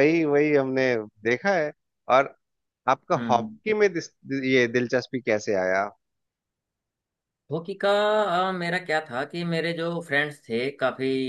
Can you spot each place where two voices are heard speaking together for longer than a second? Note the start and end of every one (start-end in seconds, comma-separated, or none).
none